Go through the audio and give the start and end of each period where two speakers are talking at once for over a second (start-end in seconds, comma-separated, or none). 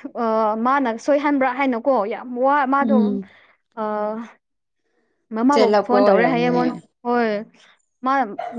5.5-6.9